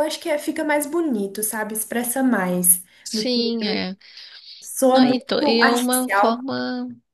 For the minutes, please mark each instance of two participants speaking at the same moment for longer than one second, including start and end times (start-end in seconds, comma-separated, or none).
4.9-6.4